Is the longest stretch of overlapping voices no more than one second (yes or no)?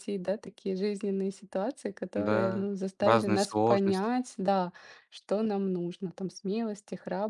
no